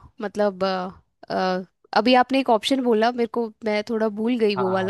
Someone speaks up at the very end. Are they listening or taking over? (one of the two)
taking over